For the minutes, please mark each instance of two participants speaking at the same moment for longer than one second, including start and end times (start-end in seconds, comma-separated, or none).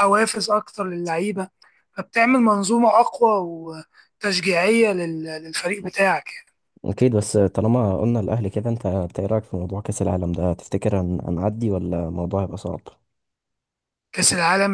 none